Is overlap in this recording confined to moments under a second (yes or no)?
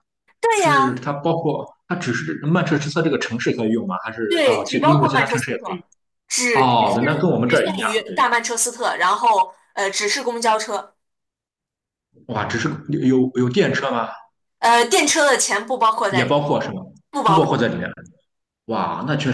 no